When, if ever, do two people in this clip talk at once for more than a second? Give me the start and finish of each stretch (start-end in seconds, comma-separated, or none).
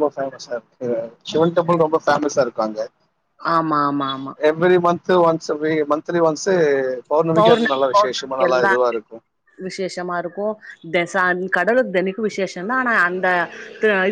7.4-8.7